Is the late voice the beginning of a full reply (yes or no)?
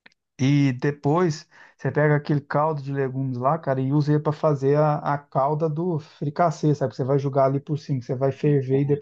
no